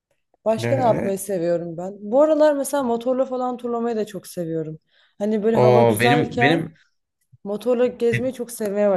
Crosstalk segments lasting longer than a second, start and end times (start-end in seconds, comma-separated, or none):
5.5-6.7